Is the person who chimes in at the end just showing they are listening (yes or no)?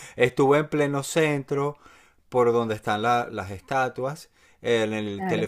yes